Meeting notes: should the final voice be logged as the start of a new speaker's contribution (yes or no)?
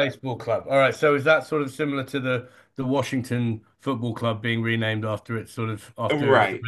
yes